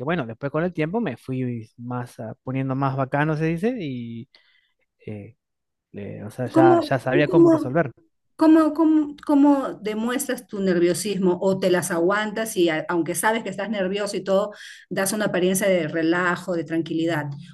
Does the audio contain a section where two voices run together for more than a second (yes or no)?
yes